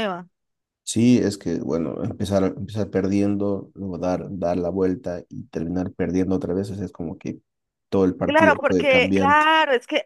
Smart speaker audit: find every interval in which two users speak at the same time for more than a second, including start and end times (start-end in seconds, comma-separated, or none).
8.2-9.5